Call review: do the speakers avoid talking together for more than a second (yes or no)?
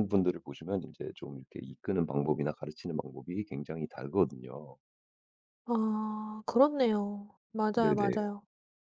yes